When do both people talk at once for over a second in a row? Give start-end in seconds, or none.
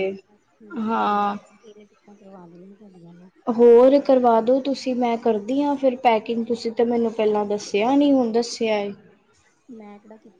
none